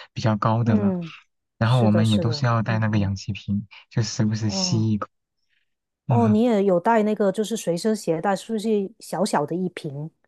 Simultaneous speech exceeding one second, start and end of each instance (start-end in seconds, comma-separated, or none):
1.6-3.1